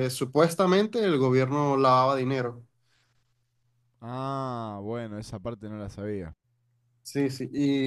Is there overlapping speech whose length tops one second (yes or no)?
no